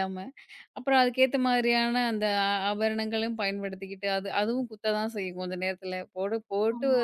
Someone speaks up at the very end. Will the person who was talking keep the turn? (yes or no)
yes